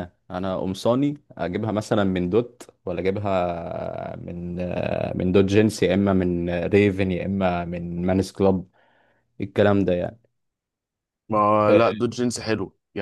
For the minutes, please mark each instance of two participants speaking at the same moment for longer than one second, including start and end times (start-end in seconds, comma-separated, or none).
none